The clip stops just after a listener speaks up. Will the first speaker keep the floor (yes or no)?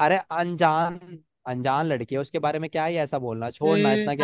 no